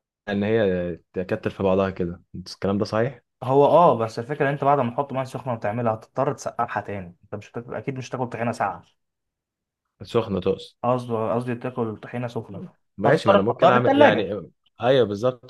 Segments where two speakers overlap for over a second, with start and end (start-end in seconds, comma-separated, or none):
13.0-14.3